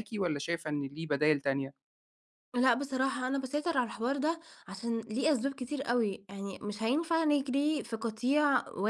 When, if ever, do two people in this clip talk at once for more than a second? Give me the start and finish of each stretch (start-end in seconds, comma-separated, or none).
none